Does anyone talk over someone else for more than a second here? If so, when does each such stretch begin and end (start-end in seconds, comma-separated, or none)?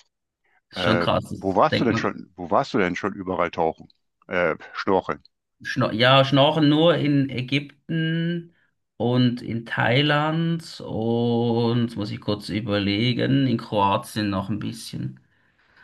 0.7-2.2